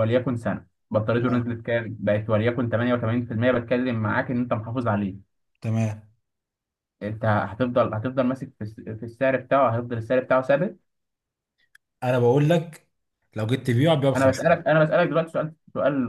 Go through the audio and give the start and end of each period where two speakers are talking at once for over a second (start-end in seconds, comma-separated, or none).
none